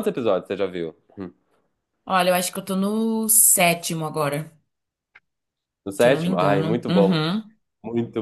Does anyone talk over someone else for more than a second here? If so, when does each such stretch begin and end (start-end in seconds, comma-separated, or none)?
6.0-7.2